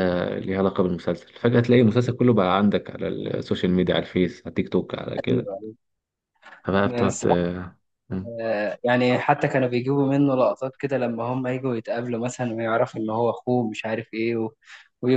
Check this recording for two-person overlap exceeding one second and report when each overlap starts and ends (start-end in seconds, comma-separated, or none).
none